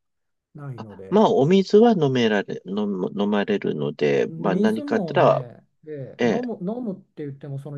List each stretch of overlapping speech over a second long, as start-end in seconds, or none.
4.3-5.5